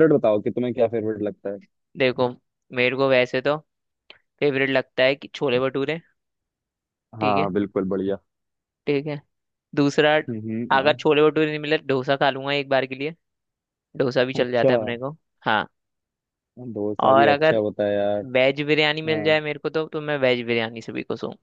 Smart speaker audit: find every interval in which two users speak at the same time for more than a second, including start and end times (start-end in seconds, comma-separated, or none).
none